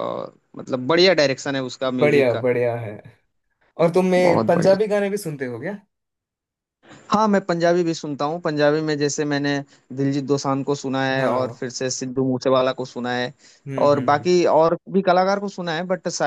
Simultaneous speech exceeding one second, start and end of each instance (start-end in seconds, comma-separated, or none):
none